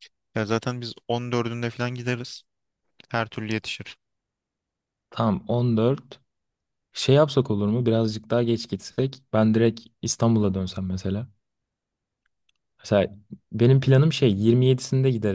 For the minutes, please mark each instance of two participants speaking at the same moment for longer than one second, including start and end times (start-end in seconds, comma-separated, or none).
none